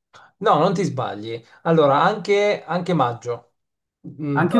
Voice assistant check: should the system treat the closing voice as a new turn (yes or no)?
no